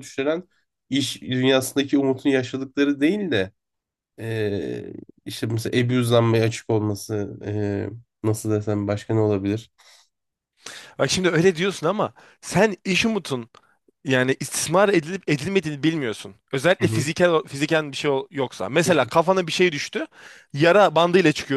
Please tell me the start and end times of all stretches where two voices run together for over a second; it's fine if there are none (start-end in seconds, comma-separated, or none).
none